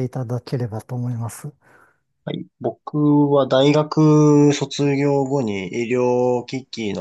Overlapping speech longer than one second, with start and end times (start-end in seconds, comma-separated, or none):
none